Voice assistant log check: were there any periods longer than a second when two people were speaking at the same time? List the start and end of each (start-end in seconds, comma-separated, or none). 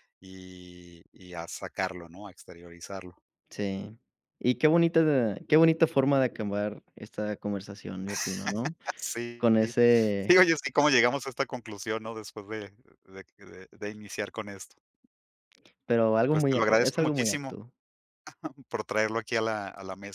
16.3-17.5